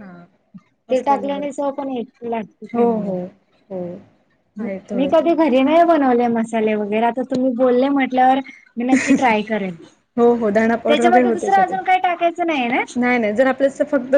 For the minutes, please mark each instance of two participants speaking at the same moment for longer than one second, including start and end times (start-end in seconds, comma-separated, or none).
10.4-11.8